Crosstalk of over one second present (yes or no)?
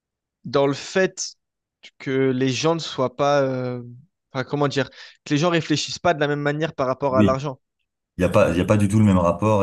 no